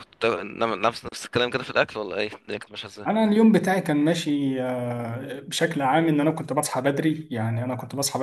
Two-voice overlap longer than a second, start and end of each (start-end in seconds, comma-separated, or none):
none